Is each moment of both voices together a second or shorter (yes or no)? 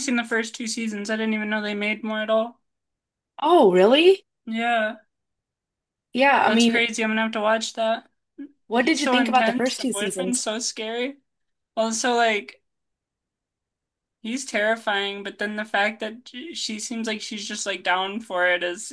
no